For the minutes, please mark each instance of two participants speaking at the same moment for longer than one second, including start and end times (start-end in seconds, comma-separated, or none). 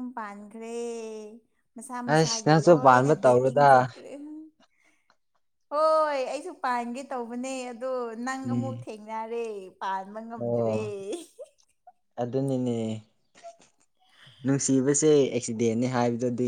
2.1-3.6